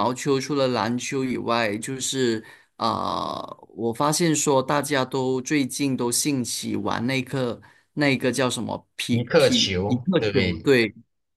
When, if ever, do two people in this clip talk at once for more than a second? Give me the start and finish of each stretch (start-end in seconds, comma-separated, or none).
9.1-10.7